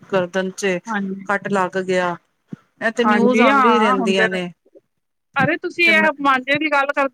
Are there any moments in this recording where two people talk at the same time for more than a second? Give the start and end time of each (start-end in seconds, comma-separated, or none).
3.0-4.3